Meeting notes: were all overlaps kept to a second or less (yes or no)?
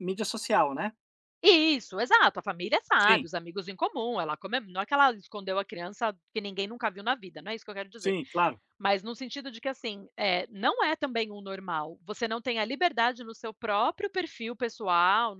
yes